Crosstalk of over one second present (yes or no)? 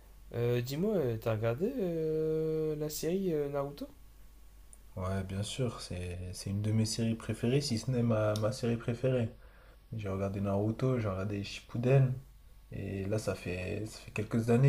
no